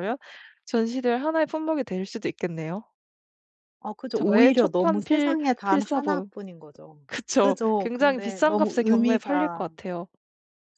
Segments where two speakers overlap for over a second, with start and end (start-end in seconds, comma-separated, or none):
4.1-6.3, 7.4-9.7